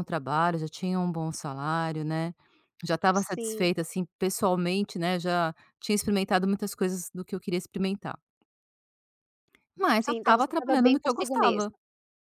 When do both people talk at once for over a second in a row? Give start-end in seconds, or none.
10.0-11.7